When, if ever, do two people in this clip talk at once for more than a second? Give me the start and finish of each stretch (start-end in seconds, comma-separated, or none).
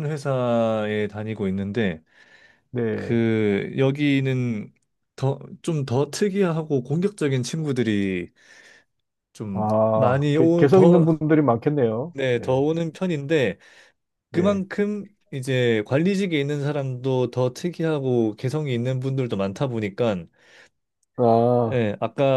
9.5-11.1